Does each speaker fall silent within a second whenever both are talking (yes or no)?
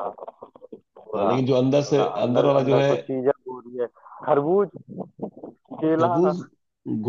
no